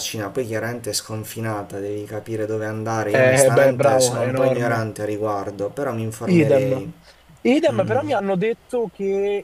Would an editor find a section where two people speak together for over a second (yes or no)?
yes